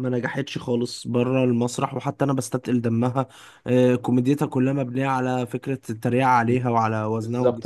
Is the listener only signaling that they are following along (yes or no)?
no